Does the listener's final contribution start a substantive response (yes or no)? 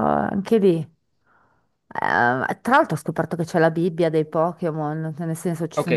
yes